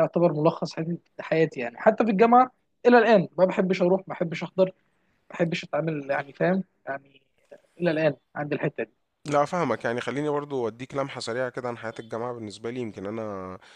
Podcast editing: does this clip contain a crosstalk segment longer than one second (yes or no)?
no